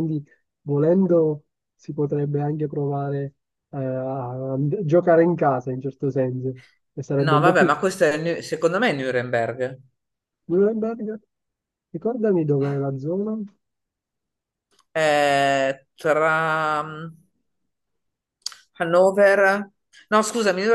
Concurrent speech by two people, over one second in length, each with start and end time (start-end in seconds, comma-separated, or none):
none